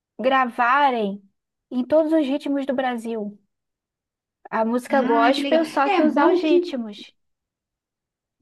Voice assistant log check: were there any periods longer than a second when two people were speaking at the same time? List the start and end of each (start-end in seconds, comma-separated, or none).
4.9-6.7